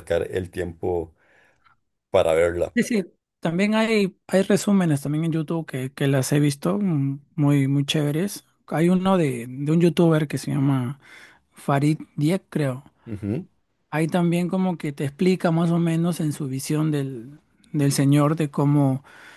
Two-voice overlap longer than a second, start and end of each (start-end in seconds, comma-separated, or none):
none